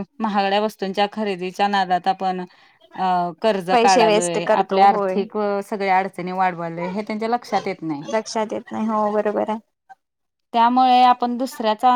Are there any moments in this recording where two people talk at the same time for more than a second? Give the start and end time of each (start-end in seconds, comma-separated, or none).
3.7-5.2